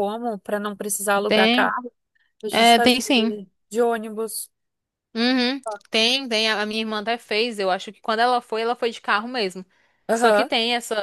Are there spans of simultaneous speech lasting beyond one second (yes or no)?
no